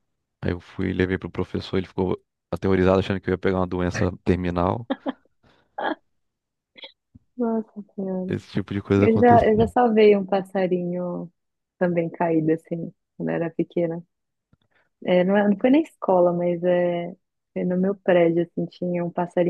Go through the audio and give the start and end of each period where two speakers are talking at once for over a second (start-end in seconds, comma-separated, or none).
none